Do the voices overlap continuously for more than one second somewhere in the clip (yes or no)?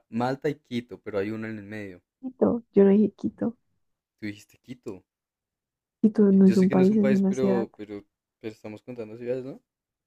yes